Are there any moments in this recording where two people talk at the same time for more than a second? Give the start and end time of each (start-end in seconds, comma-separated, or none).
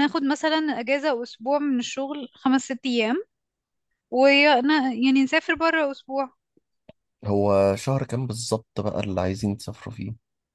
none